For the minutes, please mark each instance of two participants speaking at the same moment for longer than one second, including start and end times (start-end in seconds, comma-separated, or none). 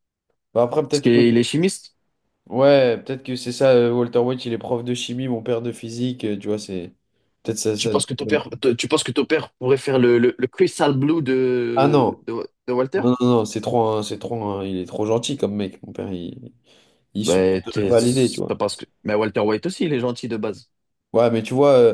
17.2-18.5